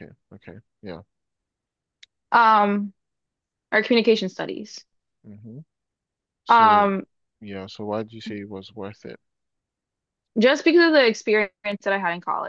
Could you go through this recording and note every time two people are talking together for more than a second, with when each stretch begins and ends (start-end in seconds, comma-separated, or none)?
none